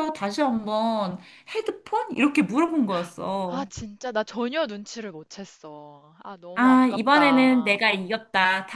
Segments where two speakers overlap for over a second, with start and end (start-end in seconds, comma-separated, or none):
6.5-7.8